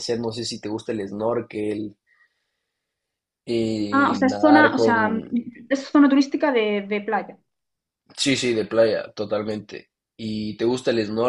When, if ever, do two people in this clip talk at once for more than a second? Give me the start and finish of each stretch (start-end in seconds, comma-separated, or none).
3.9-5.1